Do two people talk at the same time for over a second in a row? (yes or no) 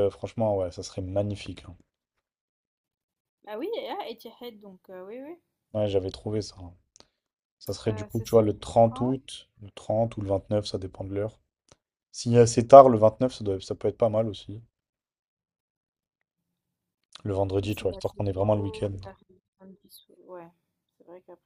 yes